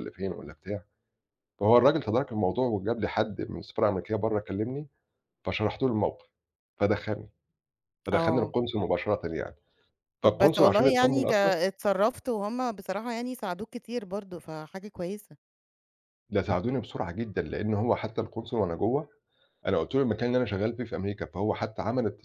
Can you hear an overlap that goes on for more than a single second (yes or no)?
yes